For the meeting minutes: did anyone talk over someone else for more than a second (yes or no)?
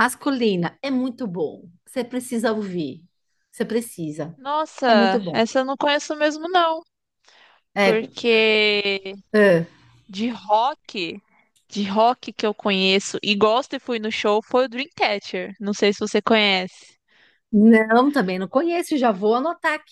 no